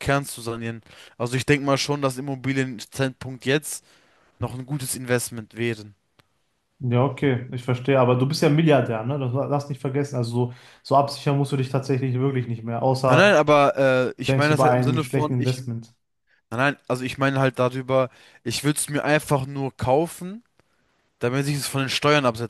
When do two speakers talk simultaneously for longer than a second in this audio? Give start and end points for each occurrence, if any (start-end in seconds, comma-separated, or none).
14.2-15.6